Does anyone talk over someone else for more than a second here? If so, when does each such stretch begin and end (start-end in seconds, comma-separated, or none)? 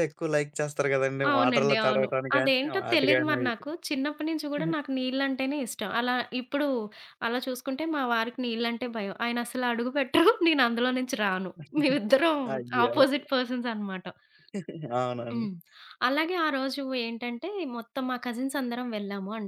1.3-3.6